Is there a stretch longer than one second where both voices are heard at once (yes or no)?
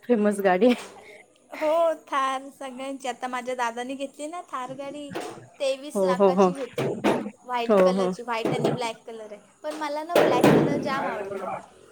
no